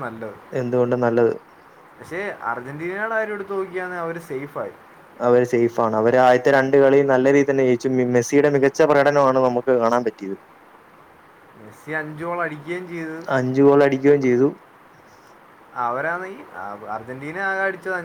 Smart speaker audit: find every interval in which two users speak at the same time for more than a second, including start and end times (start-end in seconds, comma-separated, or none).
none